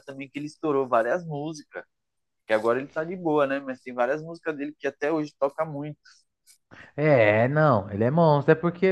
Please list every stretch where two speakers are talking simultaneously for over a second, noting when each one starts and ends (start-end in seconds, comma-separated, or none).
none